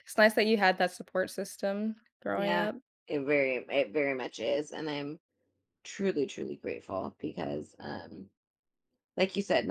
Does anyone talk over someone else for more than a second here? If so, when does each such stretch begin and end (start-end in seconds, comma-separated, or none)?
none